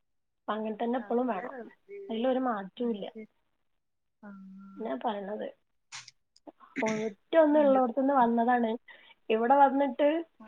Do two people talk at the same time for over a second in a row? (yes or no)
no